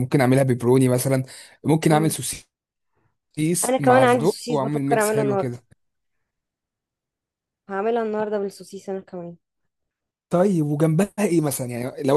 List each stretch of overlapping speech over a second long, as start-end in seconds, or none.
3.6-5.6